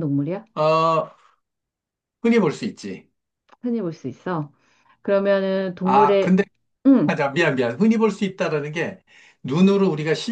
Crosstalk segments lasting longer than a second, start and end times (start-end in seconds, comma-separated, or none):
none